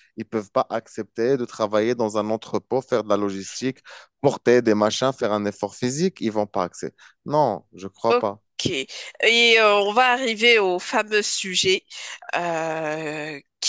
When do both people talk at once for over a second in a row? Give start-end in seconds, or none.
none